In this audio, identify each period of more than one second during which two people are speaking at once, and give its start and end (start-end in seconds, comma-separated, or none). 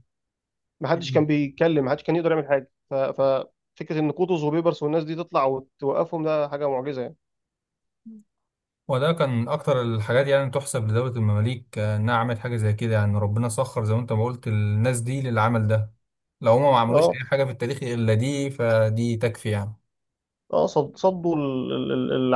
none